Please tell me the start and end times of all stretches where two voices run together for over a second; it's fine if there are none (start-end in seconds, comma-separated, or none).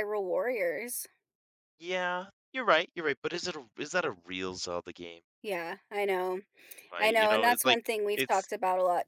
7.0-8.5